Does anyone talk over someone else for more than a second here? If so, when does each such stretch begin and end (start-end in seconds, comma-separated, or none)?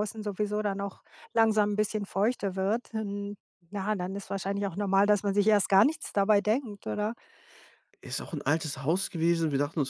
none